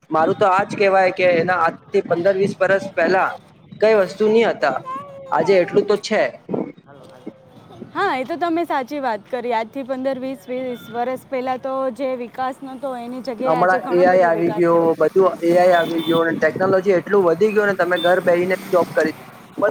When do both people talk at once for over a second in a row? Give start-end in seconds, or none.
13.4-15.6